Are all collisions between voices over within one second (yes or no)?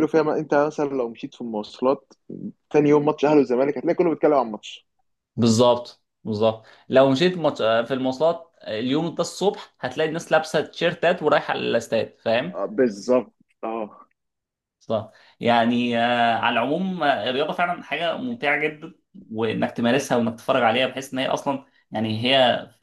yes